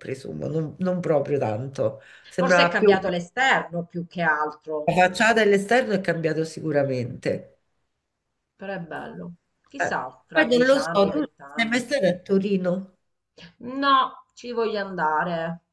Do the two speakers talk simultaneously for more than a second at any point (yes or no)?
yes